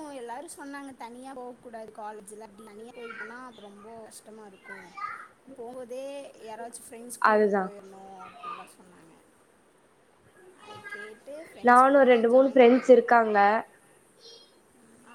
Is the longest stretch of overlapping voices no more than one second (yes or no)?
no